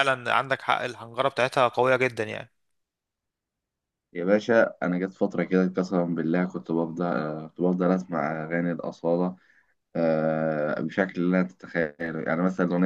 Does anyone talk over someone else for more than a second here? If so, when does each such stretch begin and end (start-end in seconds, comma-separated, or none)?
none